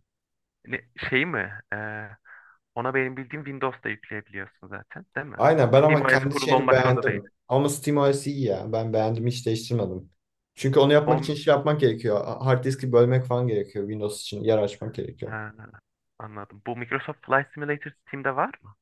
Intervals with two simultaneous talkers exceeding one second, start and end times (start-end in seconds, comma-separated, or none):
5.8-7.2